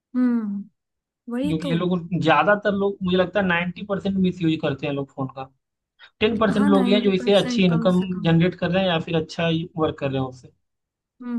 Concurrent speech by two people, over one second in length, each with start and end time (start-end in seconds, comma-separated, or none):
6.6-8.3